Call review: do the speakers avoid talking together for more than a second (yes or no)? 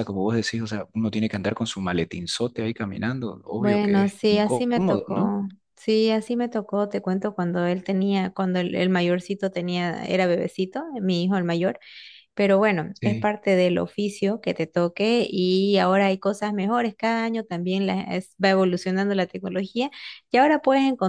no